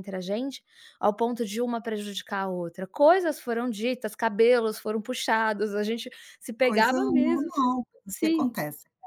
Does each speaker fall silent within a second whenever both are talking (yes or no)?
no